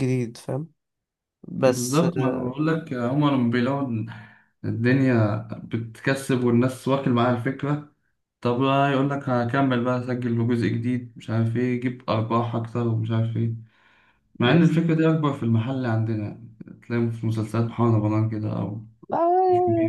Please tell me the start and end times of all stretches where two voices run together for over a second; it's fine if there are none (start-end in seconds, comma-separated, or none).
none